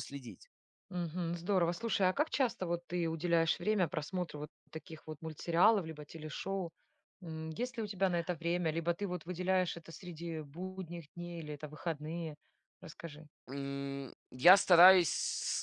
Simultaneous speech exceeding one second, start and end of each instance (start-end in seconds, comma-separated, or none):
none